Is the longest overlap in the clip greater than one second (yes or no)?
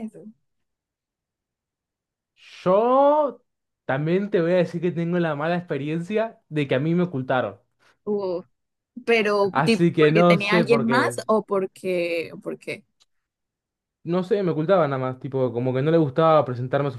yes